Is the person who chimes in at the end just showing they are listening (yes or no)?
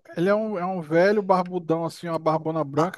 no